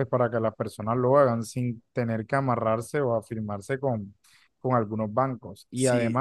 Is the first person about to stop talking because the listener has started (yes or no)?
no